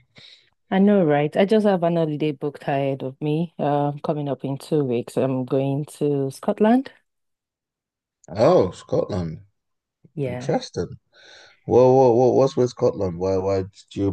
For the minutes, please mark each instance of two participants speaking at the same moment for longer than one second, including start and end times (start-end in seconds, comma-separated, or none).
none